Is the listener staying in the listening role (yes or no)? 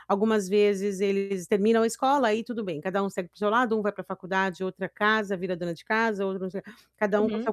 yes